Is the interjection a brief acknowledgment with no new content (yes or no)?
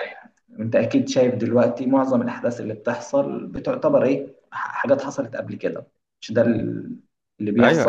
no